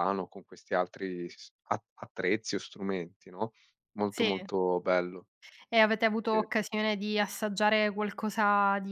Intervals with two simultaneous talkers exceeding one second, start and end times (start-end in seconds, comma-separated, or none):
none